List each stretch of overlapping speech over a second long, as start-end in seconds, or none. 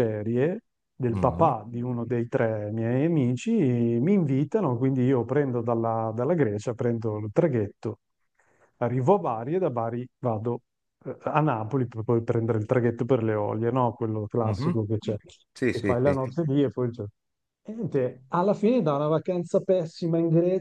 none